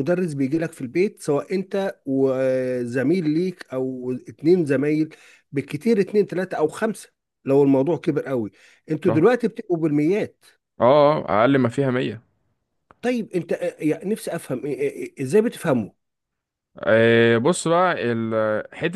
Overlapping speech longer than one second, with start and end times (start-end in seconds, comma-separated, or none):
none